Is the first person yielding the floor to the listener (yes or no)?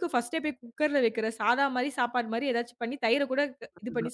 yes